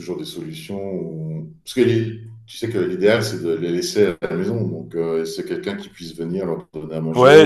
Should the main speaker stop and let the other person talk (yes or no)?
yes